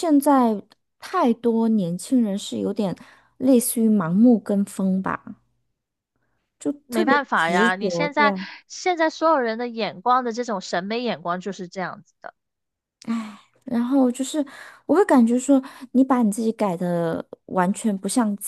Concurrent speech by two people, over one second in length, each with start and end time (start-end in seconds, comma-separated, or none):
6.9-8.5